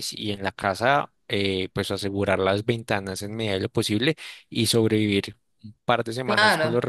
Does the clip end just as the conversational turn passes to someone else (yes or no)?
no